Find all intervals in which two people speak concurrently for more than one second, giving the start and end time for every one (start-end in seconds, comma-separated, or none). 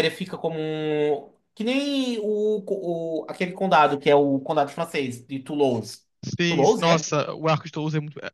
none